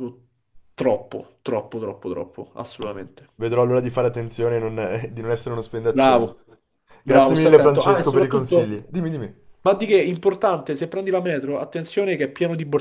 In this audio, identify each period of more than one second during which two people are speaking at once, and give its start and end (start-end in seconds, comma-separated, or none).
7.0-8.7